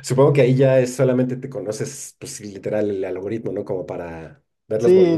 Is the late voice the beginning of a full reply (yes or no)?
yes